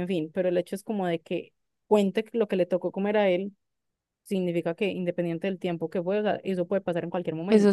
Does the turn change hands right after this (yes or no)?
yes